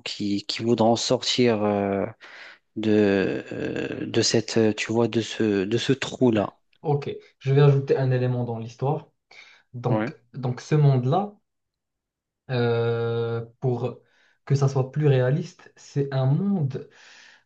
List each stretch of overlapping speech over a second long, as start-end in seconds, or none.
none